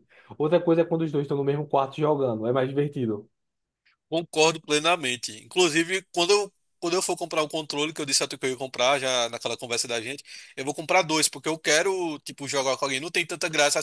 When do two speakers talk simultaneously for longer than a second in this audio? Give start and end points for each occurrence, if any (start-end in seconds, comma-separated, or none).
none